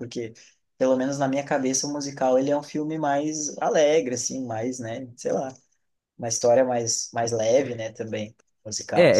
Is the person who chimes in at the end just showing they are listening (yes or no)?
no